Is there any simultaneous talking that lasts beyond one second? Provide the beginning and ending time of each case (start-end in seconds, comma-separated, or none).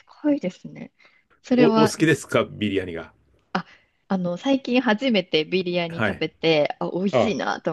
none